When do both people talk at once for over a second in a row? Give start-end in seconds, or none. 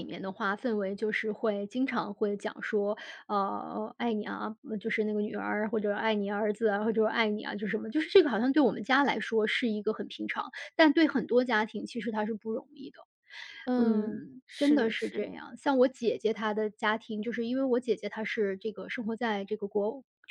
13.8-15.3